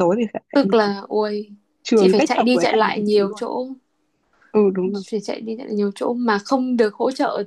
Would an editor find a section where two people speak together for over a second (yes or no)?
yes